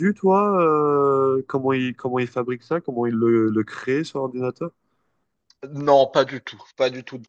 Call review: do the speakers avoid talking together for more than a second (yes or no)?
yes